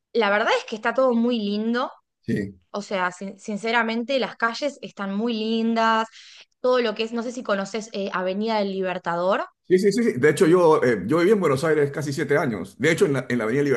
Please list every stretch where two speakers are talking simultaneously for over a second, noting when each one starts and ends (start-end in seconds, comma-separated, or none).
none